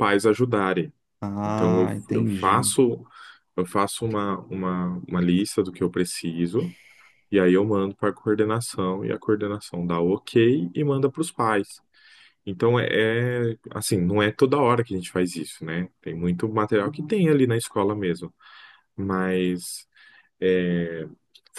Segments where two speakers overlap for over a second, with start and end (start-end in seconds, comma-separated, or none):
1.4-2.7